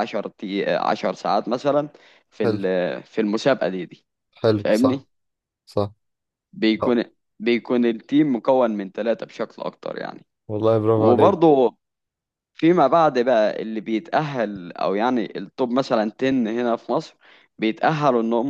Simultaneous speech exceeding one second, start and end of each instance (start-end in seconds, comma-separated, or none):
none